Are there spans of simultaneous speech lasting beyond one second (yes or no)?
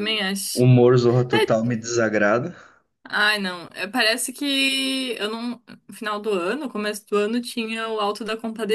no